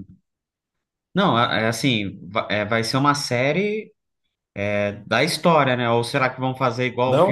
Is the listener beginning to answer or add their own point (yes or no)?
yes